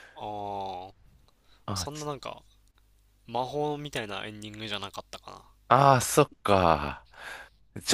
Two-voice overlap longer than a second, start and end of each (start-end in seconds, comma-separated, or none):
none